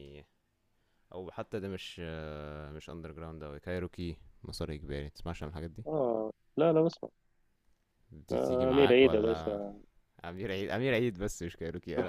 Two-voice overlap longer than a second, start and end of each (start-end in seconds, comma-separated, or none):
8.3-9.6